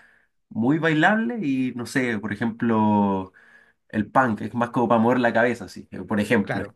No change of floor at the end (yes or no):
yes